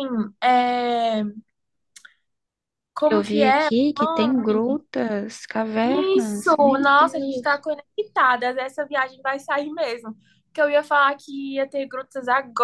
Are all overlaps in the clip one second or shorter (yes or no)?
no